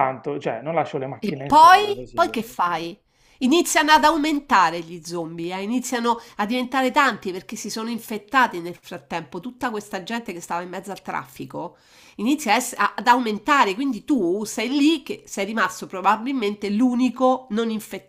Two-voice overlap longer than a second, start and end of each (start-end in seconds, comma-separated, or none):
1.2-2.4